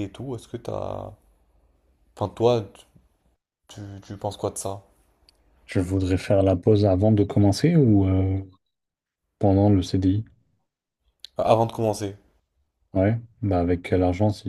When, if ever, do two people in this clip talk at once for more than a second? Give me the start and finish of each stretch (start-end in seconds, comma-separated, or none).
none